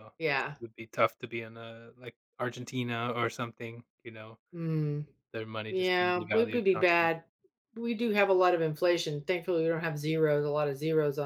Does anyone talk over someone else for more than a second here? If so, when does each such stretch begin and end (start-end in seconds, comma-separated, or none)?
5.7-7.1